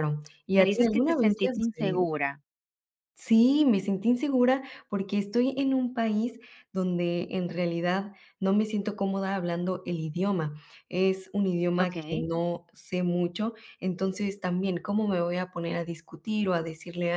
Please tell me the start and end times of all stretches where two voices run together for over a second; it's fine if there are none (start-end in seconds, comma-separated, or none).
0.5-2.1